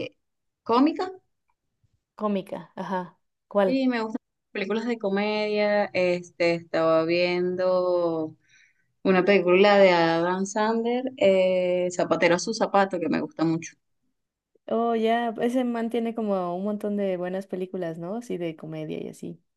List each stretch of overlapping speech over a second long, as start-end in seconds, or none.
none